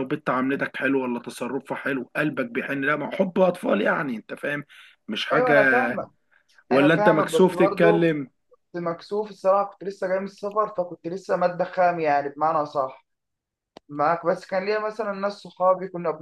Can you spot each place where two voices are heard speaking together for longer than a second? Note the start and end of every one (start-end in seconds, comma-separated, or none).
6.7-8.1